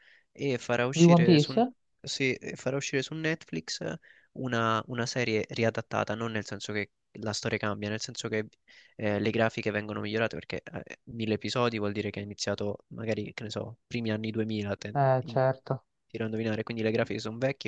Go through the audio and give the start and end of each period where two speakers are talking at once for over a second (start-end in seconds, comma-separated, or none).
none